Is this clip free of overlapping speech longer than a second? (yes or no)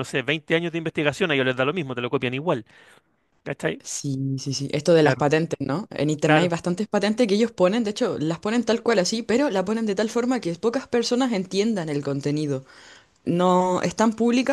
yes